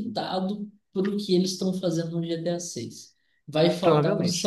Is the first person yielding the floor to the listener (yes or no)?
no